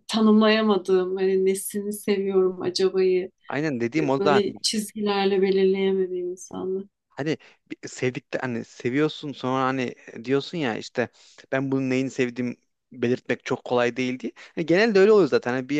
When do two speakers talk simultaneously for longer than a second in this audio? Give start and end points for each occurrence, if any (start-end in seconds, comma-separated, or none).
none